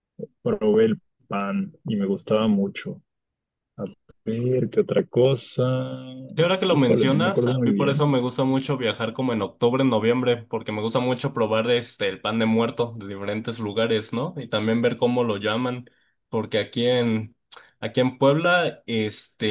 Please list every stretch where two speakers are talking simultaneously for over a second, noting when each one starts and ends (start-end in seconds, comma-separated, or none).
6.7-8.1